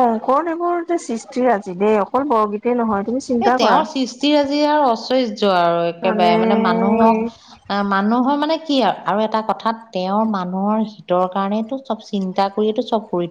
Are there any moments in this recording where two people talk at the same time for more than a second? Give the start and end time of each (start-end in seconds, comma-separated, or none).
none